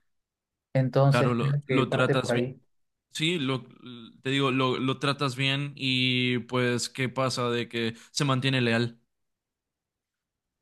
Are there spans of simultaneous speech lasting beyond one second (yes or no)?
yes